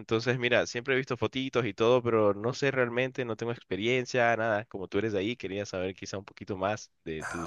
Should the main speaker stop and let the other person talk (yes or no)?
yes